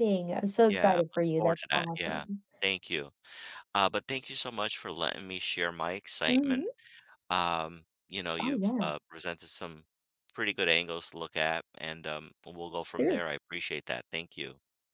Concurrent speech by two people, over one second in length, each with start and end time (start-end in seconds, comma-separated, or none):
0.7-2.2